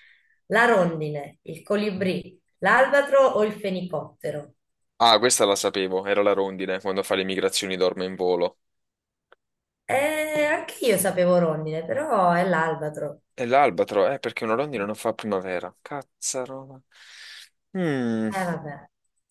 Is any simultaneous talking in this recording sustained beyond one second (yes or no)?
no